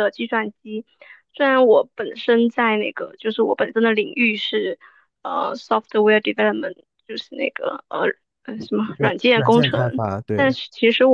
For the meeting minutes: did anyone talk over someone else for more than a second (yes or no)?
yes